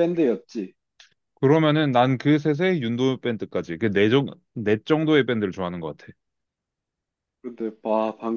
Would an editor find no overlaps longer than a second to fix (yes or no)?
yes